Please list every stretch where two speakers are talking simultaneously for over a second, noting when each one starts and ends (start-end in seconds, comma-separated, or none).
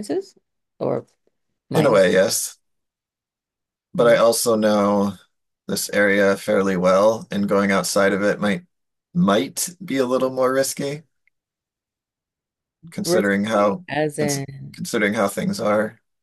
13.0-14.5